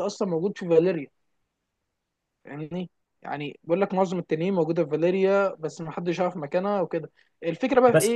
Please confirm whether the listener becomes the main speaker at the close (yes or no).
no